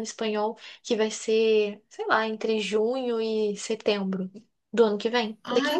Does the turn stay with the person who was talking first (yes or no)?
no